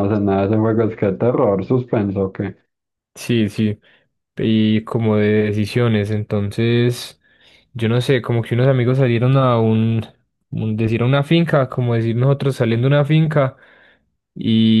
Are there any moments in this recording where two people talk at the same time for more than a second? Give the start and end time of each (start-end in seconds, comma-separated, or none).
none